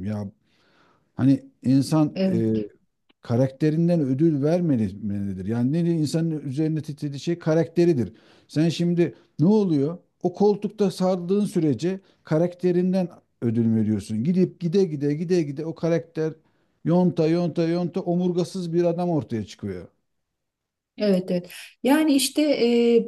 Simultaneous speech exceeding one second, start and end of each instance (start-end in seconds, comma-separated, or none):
none